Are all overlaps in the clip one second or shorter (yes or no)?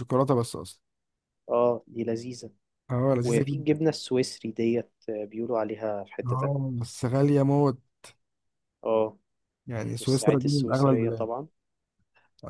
no